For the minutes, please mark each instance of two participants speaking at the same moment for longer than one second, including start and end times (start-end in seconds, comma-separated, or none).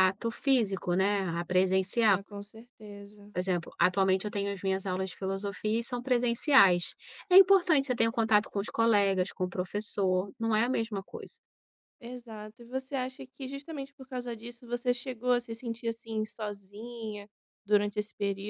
none